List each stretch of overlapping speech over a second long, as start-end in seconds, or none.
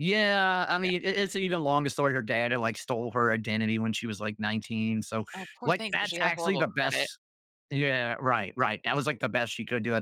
5.7-7.1